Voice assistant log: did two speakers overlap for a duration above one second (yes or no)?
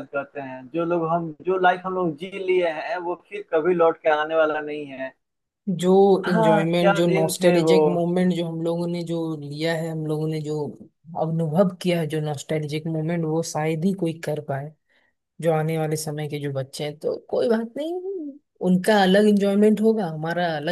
yes